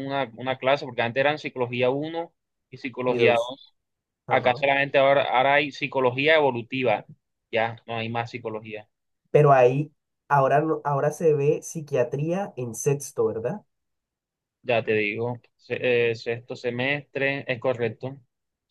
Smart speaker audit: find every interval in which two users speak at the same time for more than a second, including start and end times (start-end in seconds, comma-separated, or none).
none